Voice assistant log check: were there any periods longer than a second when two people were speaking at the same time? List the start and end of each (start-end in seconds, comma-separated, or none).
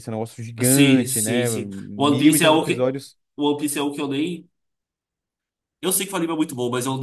0.6-2.9